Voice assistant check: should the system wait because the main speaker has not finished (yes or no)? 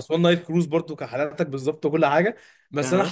yes